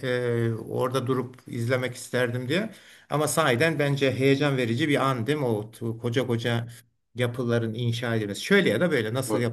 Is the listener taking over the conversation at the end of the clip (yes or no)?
yes